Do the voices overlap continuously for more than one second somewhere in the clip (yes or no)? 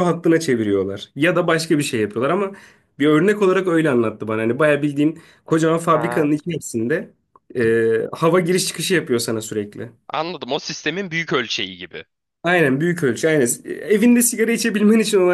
no